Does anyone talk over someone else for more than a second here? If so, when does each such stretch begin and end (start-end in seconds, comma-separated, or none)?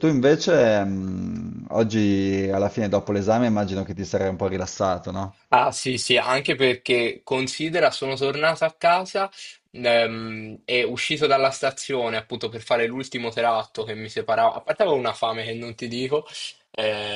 none